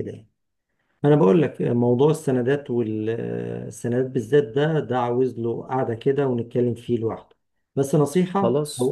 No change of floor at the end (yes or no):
yes